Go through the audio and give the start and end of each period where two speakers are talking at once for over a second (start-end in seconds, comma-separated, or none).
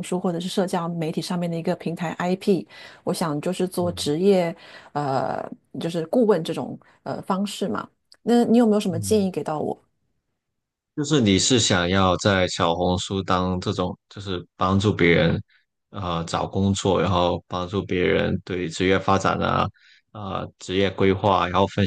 none